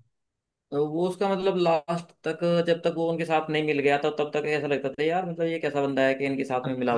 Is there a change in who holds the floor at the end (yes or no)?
yes